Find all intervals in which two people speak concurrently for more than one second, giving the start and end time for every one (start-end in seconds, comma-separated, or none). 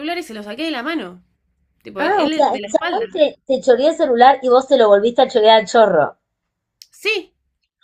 2.0-3.2